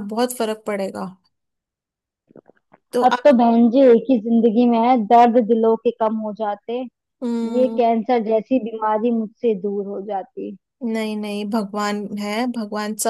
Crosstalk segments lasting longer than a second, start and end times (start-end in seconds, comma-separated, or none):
none